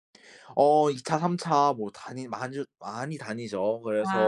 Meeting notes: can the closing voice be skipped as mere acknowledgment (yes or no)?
yes